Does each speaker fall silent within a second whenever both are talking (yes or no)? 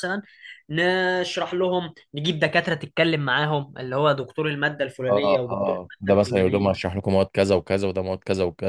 no